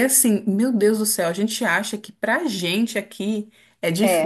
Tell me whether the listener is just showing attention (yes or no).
yes